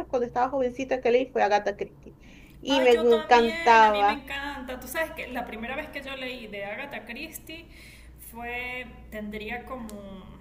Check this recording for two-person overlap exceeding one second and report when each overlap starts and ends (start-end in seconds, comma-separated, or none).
2.7-4.2